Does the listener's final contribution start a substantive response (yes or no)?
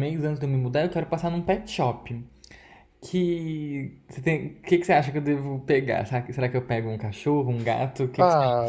yes